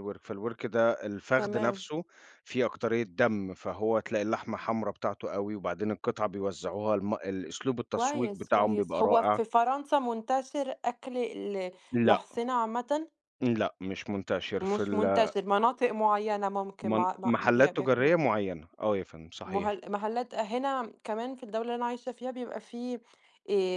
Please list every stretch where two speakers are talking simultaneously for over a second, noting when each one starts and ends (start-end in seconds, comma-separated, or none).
7.9-9.4, 16.8-18.1